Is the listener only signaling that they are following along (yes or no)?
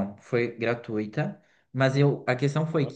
yes